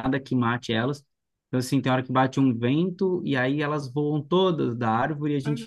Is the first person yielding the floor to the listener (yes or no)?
no